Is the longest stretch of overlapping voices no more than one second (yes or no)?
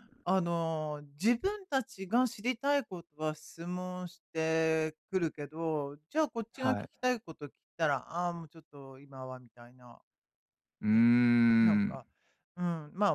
yes